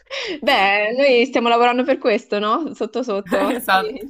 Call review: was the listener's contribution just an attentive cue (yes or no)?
no